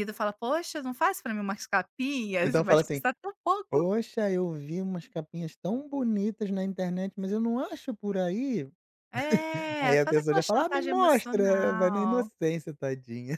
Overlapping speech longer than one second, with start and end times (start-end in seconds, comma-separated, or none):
9.8-12.3